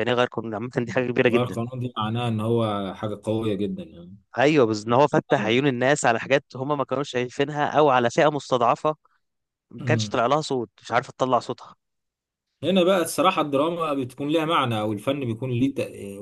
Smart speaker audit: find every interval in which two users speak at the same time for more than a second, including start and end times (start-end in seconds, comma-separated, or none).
none